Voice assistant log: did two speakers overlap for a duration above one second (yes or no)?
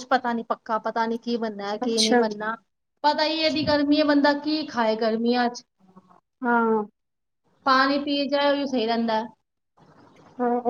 yes